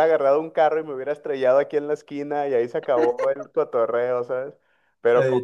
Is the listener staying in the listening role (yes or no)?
yes